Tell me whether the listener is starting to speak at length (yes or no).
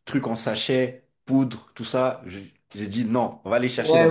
yes